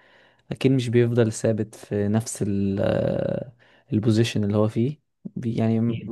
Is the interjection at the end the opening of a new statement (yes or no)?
no